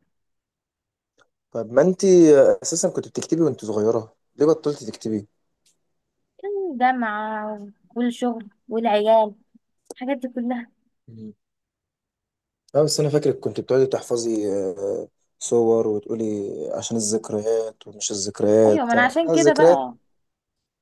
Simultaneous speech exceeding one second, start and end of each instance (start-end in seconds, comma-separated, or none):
18.7-19.9